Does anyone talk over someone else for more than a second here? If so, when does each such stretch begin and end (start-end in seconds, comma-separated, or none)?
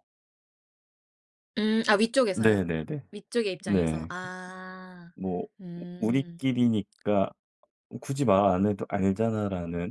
none